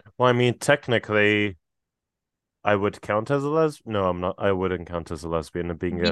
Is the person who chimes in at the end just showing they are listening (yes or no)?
yes